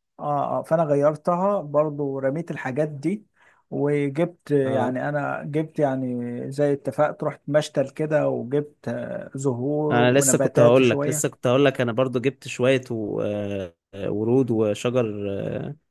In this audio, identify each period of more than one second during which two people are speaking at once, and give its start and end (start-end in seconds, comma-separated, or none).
9.9-11.3